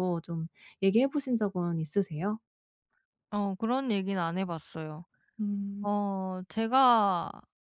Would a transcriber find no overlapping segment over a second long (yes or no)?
yes